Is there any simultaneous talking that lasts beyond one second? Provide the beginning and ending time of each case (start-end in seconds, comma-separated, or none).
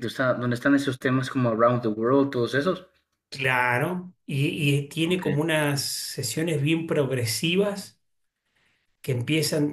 none